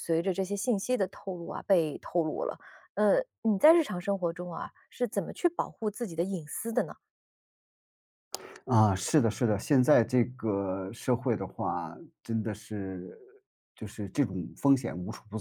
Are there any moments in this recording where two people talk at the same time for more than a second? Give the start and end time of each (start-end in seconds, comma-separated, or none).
none